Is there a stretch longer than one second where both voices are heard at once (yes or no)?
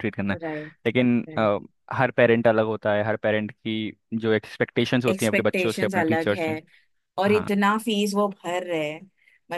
yes